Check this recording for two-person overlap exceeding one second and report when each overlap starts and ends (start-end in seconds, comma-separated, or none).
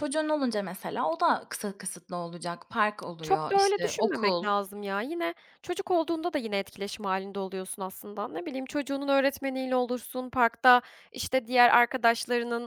3.2-4.5